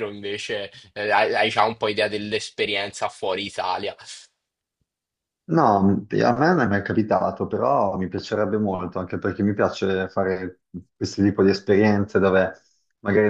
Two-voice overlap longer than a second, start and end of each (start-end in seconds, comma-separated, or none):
none